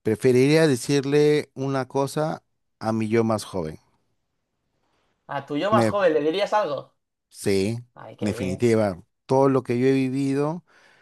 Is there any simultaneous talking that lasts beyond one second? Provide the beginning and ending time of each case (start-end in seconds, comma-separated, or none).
none